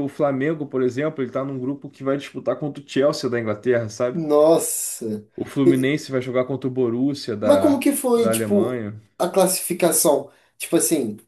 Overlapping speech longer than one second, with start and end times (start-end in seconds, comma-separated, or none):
7.4-9.0